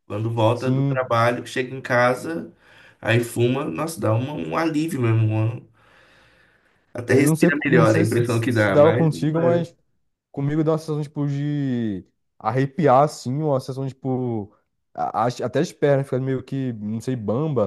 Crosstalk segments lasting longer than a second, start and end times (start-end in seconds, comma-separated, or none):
7.1-9.7